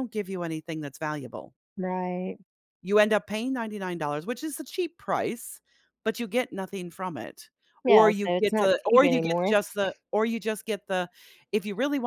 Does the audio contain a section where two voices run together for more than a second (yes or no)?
yes